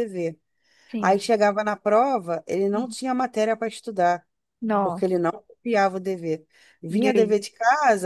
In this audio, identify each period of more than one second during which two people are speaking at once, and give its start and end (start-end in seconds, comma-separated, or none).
none